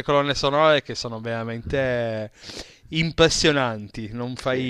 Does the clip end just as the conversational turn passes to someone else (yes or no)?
no